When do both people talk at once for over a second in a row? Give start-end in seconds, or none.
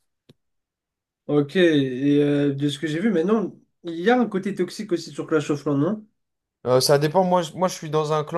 none